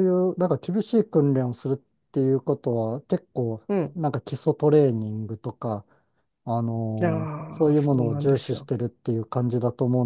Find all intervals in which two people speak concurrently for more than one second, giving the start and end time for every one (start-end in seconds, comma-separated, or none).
7.0-8.7